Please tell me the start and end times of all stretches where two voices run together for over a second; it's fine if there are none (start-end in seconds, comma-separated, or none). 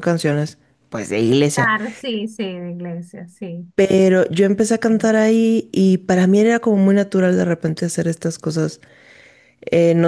none